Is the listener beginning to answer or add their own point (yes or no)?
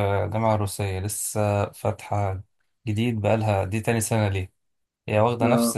no